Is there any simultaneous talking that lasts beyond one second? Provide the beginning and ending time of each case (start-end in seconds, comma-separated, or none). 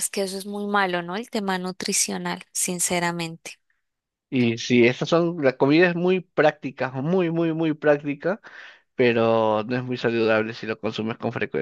none